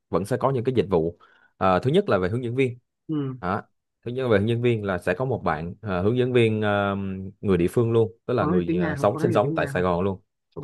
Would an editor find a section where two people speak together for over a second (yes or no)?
yes